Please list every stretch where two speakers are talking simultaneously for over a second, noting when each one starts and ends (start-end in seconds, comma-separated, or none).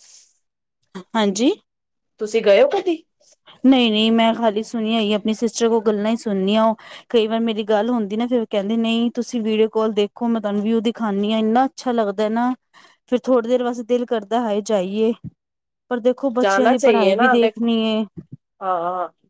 16.4-17.6